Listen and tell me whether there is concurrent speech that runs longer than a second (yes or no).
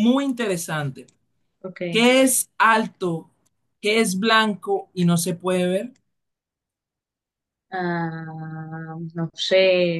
no